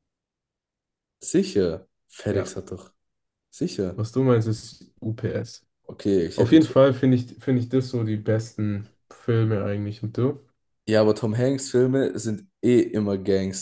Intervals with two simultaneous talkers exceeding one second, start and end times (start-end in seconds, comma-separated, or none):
none